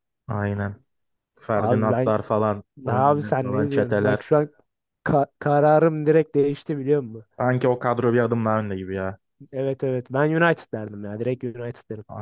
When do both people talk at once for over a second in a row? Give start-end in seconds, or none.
2.9-4.2